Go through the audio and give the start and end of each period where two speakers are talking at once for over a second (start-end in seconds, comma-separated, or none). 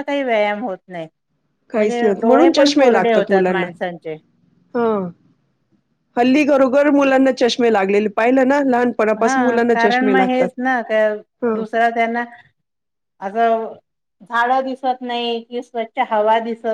1.7-3.6